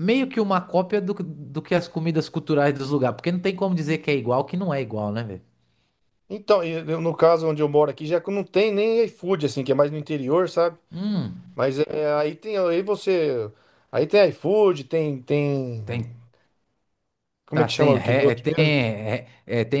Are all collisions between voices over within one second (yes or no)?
no